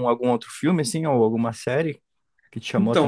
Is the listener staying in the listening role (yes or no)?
no